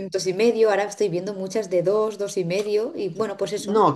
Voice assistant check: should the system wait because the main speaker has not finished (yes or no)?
no